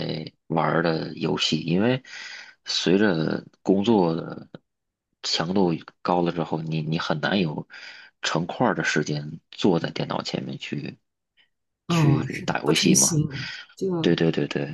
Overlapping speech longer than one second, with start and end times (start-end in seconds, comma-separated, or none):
11.9-13.2